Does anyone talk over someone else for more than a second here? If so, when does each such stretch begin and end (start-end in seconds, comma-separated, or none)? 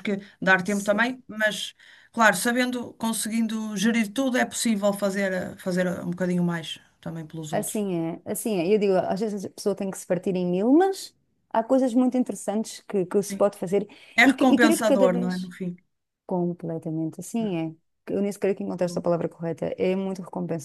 14.2-15.5